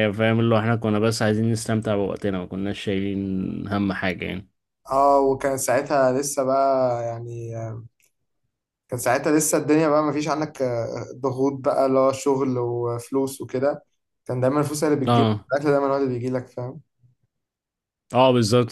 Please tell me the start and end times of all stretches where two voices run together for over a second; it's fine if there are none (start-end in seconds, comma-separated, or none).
none